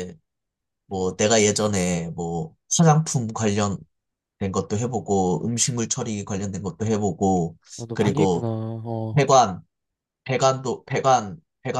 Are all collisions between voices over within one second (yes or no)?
yes